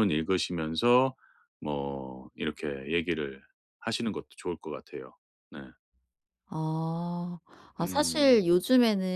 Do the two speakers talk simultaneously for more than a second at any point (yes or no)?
no